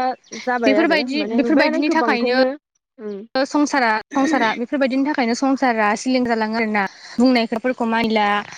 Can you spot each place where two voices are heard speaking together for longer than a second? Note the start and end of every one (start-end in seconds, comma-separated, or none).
0.6-2.4